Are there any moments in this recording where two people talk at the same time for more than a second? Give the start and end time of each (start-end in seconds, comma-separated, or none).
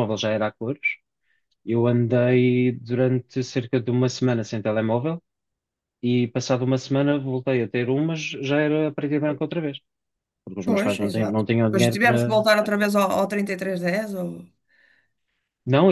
10.7-12.4